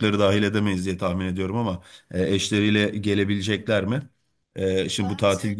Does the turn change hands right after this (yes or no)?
no